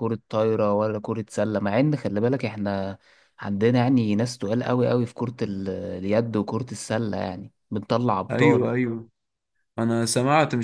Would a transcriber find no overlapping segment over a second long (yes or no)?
yes